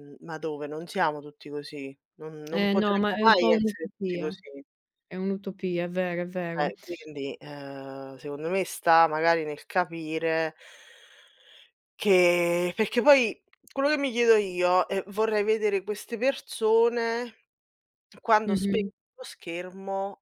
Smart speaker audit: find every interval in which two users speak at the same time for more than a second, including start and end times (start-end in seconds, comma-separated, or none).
2.5-4.4